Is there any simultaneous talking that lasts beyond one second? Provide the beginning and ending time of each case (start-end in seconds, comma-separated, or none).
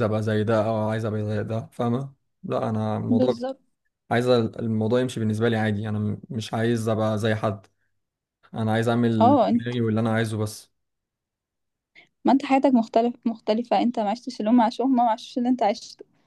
none